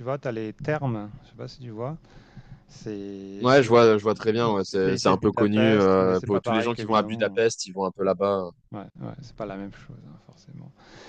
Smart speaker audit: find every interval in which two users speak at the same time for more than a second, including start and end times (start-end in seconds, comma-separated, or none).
4.4-7.4